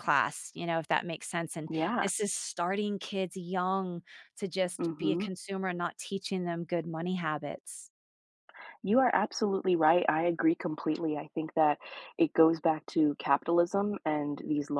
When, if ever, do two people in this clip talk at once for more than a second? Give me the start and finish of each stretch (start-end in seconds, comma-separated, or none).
none